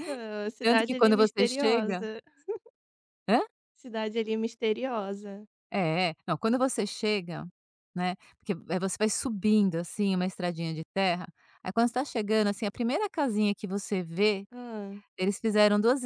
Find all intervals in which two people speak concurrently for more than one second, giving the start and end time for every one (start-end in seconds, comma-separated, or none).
0.6-2.0